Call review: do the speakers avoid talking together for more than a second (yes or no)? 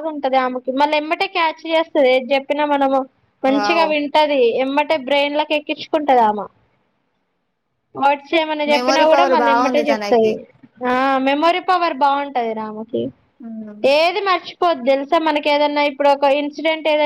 no